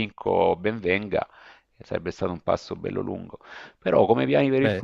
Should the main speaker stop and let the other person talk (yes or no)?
no